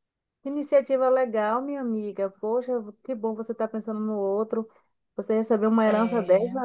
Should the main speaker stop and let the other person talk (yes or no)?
no